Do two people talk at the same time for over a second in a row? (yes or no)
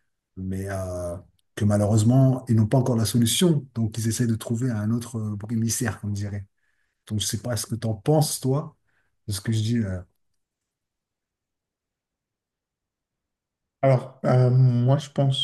no